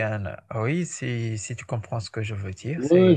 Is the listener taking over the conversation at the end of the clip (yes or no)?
yes